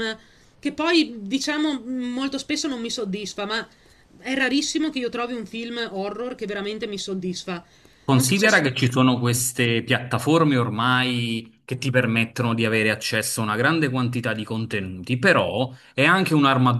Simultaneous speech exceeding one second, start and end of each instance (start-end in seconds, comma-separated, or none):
none